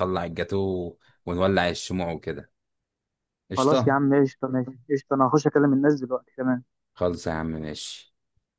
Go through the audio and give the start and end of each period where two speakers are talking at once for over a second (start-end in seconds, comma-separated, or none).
none